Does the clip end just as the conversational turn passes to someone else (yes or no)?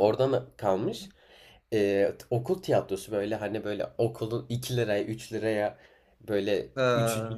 no